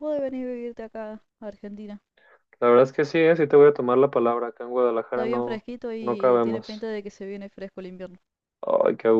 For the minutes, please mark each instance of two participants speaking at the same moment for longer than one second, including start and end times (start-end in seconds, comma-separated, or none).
5.1-6.9